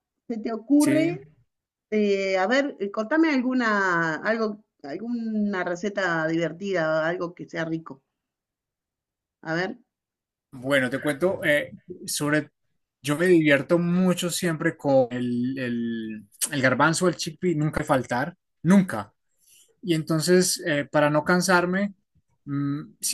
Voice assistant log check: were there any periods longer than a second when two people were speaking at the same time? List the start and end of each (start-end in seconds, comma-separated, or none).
none